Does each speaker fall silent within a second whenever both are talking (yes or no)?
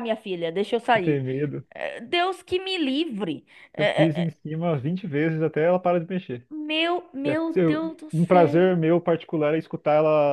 no